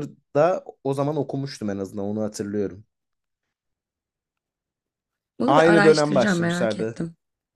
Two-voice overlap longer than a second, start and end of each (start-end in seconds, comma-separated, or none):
5.5-7.0